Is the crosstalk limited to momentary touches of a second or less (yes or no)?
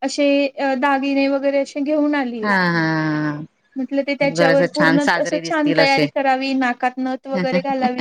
no